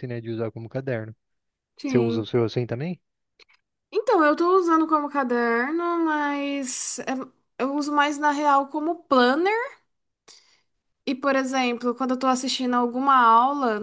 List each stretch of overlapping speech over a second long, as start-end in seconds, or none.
none